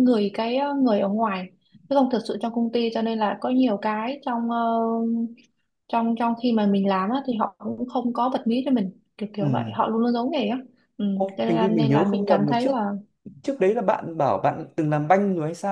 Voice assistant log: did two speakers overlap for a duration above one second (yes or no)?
yes